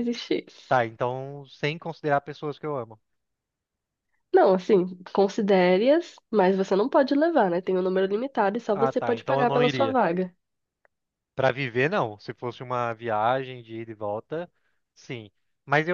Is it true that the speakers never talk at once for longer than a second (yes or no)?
no